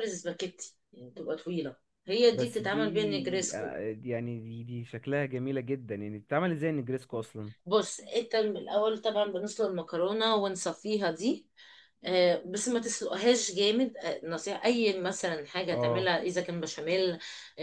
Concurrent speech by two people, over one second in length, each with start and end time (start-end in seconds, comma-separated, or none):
2.3-3.8